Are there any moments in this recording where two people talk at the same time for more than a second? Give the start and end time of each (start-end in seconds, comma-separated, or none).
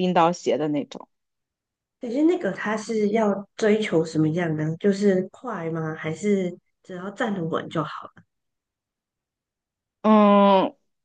none